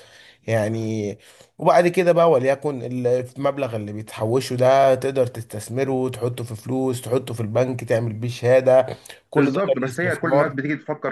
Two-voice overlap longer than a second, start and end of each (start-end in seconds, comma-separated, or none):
9.4-10.6